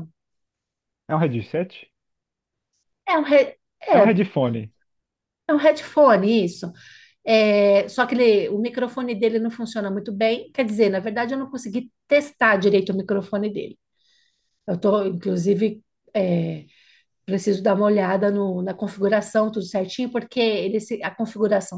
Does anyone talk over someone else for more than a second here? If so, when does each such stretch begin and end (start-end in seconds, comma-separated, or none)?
none